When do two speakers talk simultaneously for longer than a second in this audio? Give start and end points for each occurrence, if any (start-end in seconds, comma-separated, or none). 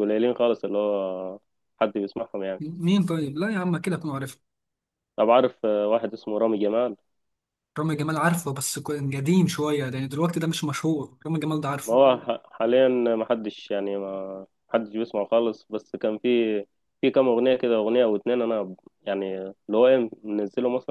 none